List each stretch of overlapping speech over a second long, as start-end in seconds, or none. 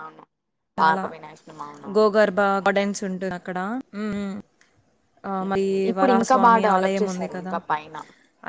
5.4-7.5